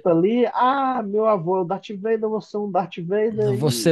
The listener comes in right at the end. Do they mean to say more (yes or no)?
yes